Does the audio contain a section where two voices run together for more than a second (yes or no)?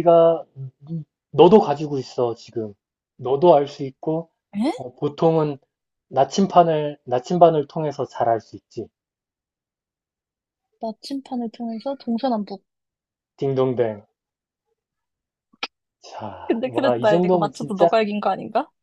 yes